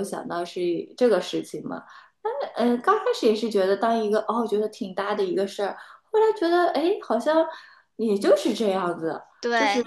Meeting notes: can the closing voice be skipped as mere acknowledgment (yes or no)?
yes